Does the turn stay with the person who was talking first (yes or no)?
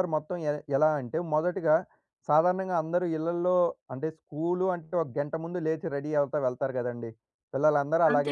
yes